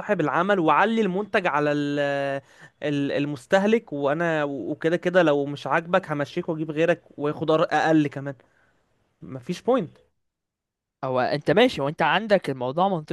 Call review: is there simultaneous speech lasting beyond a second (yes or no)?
no